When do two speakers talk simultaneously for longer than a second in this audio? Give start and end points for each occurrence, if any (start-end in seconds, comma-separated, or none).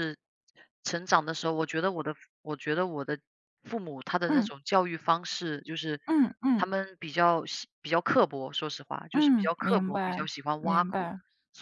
9.1-11.1